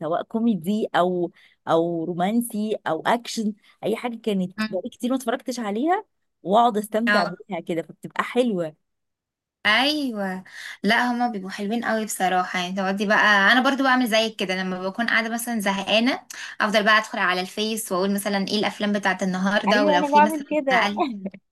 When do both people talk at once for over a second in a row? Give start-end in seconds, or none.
19.7-20.9